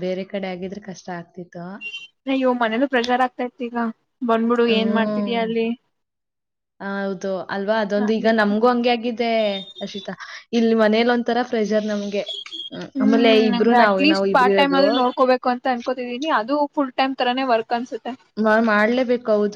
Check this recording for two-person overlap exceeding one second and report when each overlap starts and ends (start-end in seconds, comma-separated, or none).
13.0-14.8